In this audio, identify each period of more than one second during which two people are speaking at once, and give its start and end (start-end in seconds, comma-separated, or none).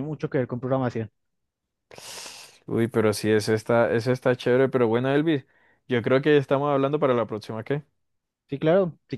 none